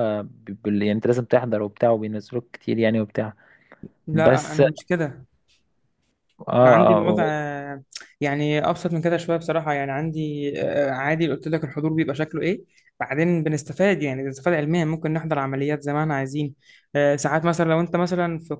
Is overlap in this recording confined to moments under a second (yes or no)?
yes